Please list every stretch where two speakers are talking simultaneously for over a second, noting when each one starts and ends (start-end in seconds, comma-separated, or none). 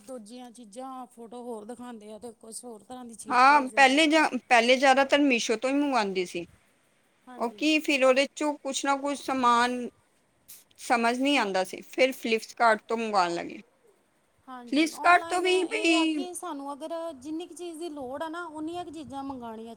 14.7-16.2